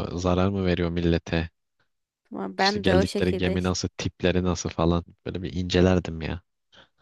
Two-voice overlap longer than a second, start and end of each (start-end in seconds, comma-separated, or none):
2.6-3.8